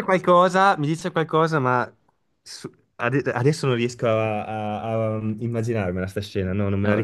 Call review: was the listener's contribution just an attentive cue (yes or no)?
yes